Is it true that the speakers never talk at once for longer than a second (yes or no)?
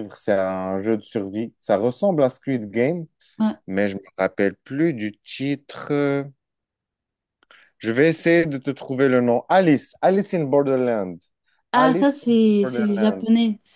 no